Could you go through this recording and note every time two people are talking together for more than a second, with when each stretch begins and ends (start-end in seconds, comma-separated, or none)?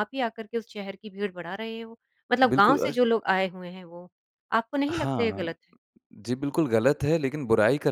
none